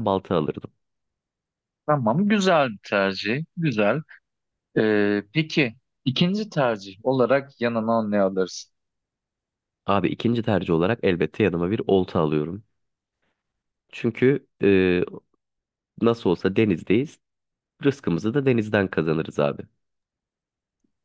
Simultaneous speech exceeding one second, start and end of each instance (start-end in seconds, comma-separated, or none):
none